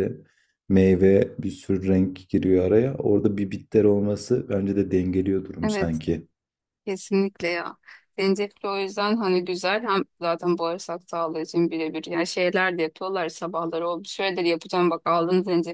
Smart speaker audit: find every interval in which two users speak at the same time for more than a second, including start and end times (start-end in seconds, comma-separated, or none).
none